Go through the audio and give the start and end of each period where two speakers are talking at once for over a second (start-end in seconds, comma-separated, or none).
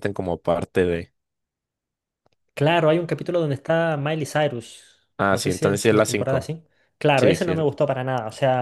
5.3-6.5